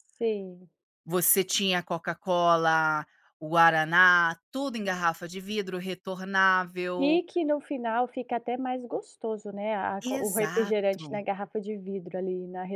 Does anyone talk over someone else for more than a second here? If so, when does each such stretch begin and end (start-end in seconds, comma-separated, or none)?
10.0-11.2